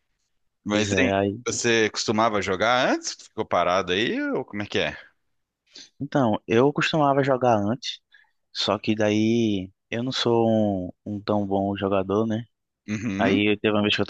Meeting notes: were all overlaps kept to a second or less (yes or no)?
yes